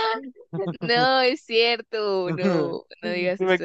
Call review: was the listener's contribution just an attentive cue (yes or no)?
no